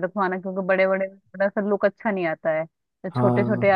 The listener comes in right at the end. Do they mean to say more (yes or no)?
no